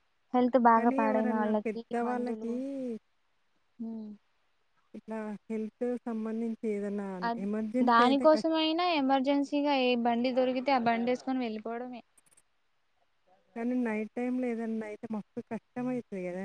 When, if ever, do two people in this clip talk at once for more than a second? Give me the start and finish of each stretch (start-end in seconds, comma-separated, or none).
0.8-2.5